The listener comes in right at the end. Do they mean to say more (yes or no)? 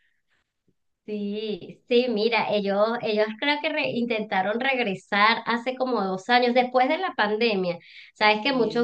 no